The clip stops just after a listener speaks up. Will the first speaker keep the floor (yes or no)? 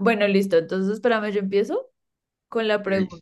yes